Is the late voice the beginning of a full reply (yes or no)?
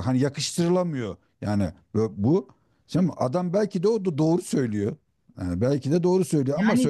no